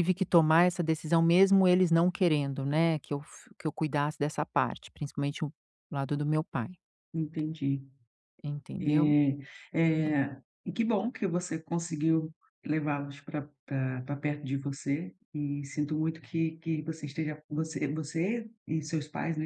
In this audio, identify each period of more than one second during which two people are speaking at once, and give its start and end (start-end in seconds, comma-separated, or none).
none